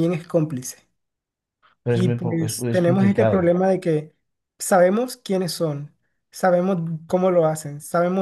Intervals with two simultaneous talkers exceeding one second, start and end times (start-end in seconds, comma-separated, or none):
1.9-3.5